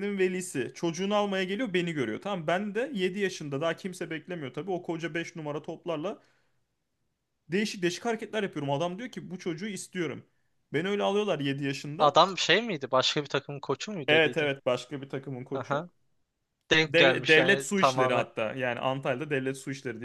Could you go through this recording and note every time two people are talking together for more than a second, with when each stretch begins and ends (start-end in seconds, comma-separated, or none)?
16.8-18.3